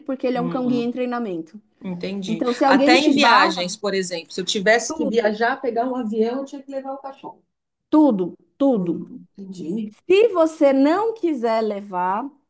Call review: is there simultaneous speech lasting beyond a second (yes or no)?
yes